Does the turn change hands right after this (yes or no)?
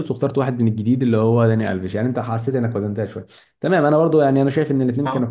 no